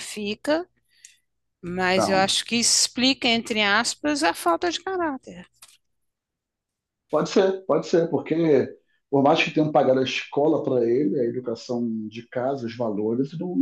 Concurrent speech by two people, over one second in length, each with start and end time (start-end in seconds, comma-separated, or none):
none